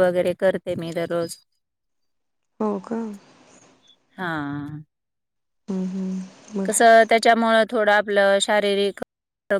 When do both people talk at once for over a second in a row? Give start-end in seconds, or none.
none